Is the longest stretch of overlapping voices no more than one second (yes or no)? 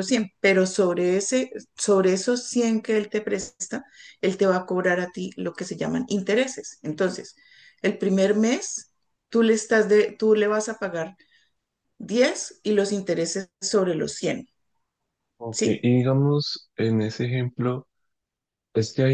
yes